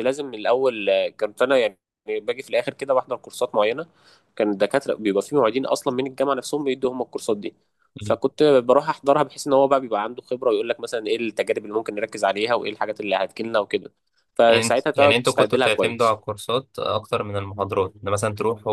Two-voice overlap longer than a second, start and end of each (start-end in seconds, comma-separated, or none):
14.5-16.2